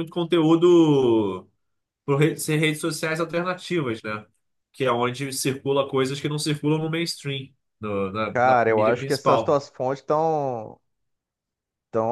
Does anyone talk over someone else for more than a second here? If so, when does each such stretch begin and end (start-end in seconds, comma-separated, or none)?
8.3-9.6